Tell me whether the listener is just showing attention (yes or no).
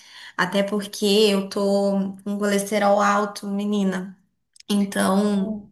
yes